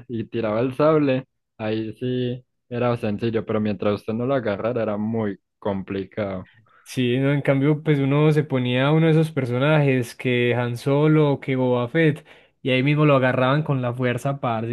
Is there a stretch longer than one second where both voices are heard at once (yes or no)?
no